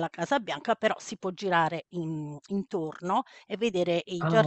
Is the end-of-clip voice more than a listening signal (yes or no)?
no